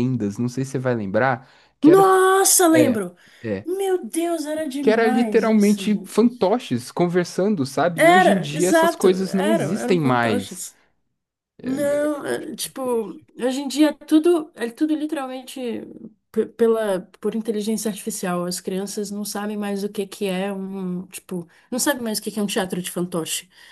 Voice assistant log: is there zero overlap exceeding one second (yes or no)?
no